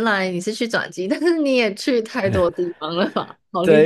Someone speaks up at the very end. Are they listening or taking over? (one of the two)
taking over